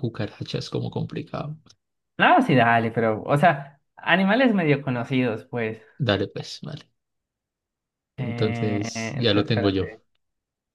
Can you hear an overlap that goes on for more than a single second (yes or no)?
yes